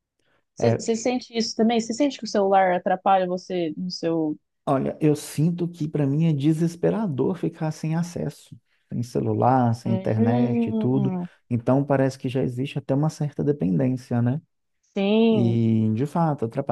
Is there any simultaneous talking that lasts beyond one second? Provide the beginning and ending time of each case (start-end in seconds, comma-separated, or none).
9.8-11.1